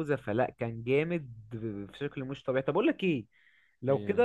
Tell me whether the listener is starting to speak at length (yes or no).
no